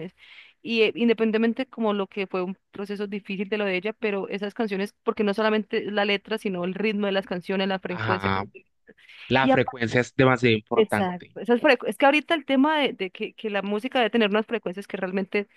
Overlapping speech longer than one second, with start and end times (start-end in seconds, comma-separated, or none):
none